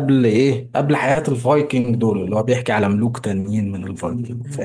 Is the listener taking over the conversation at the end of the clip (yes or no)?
yes